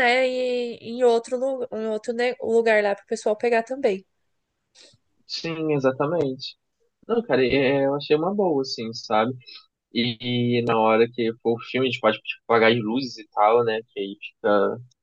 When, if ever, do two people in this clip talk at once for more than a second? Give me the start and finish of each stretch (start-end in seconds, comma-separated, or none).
none